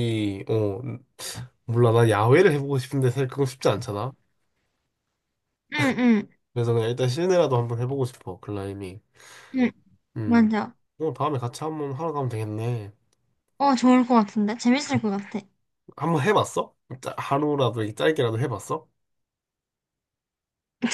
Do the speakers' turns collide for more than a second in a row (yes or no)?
no